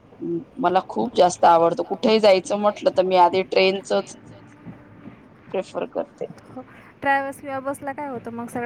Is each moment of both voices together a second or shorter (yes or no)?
yes